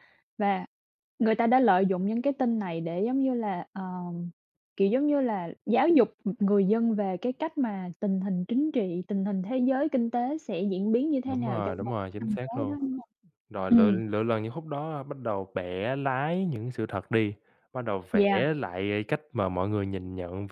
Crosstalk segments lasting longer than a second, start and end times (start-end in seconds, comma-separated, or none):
11.2-12.8